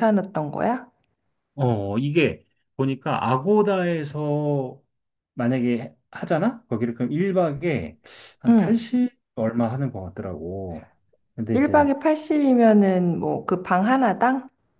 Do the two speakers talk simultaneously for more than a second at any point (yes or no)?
no